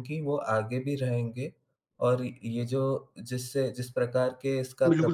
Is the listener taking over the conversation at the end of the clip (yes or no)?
yes